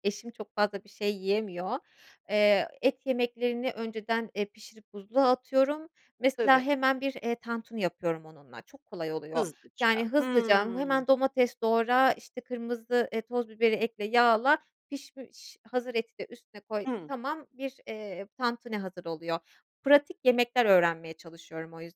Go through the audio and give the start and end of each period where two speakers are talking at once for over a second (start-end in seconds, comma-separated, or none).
9.3-11.1